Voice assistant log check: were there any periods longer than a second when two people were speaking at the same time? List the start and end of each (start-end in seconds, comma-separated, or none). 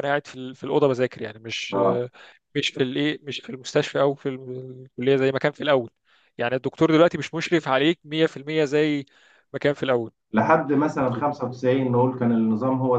none